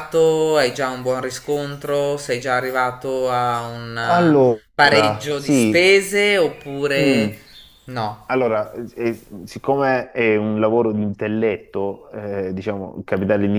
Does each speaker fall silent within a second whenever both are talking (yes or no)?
no